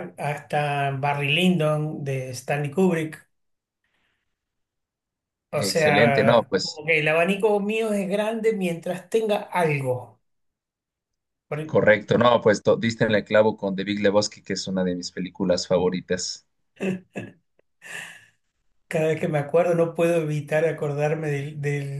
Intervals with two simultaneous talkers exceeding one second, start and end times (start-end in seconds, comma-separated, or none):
5.5-6.8